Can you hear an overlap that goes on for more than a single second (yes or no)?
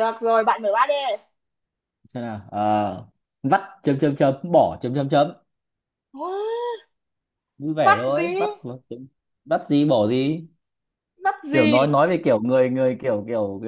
no